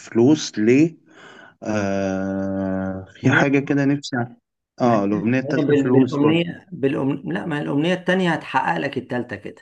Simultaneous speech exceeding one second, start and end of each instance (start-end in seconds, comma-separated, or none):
4.8-6.4